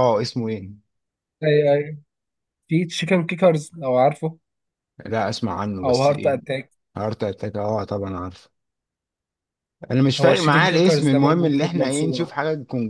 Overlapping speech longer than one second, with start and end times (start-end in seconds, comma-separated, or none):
10.2-12.3